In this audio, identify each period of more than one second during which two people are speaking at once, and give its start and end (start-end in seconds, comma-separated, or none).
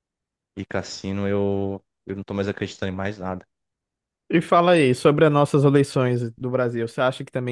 none